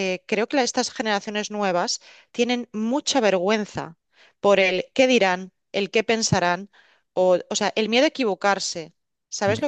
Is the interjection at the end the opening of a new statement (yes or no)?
yes